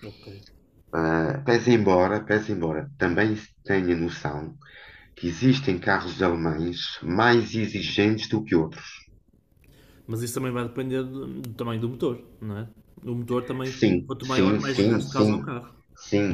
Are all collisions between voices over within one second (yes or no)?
no